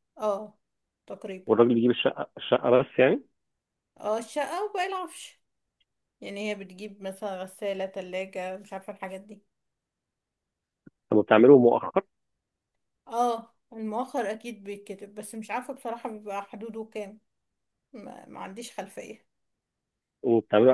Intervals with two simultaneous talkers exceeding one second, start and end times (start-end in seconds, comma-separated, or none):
none